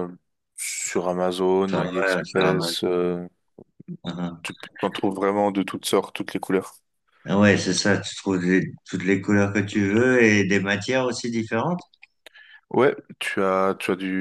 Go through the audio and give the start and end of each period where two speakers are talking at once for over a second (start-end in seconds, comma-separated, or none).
1.7-2.9